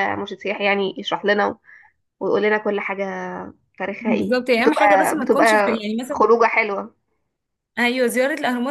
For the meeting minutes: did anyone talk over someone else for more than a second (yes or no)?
yes